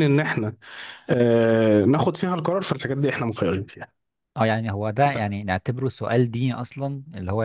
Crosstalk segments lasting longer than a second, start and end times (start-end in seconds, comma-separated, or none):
none